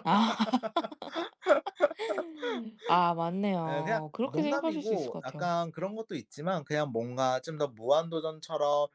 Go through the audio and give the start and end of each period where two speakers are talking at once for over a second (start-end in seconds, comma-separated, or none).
3.7-5.5